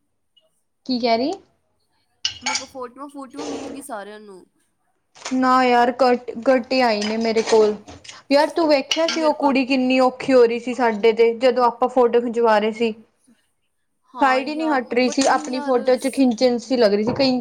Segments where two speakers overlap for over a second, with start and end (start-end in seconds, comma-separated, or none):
14.2-15.8